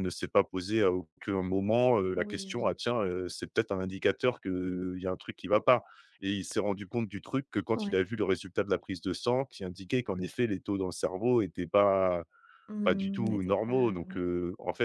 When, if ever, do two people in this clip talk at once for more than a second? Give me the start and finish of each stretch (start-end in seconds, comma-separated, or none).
12.8-14.2